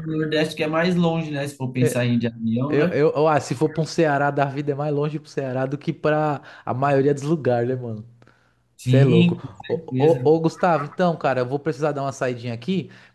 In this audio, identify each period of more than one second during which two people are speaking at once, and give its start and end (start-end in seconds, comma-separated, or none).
8.8-10.2